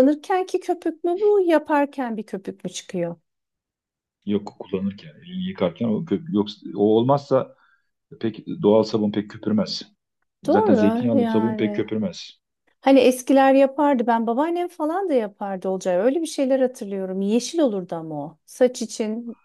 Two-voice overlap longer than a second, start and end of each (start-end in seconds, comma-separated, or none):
10.4-12.0